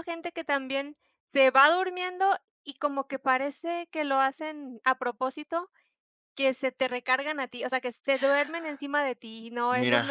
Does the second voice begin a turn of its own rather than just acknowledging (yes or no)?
yes